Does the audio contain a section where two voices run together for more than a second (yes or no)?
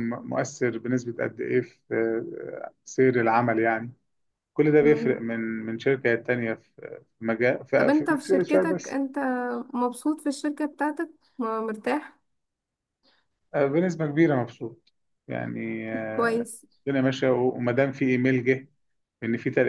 yes